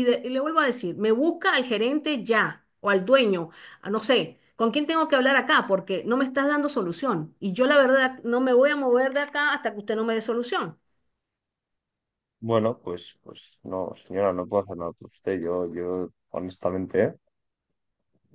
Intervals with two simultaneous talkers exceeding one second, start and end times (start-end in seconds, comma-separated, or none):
none